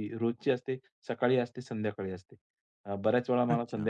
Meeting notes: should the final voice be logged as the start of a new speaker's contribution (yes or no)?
no